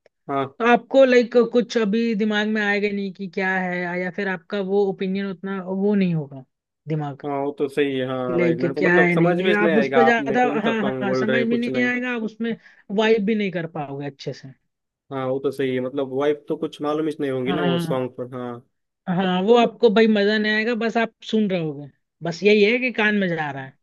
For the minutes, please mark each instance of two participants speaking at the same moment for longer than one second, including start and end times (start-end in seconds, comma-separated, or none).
8.2-11.9